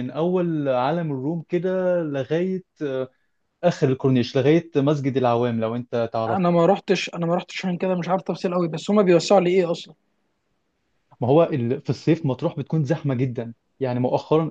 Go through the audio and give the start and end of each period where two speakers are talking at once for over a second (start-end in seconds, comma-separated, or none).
none